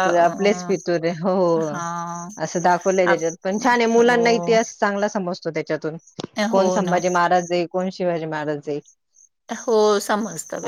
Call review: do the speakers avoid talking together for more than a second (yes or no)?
yes